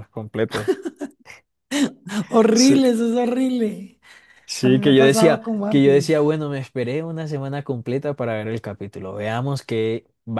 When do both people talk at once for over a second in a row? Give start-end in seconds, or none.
4.6-6.2